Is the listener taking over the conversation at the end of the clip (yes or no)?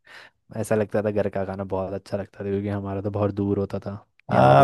yes